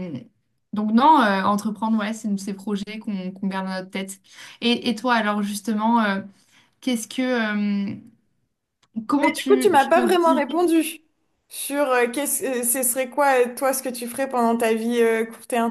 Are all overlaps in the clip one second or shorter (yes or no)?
no